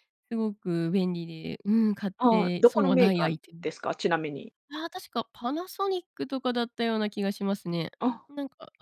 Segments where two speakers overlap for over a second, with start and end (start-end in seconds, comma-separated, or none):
2.2-3.7